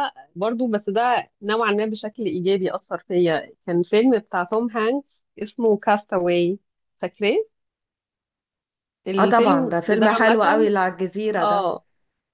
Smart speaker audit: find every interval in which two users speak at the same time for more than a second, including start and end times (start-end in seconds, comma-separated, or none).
9.2-10.7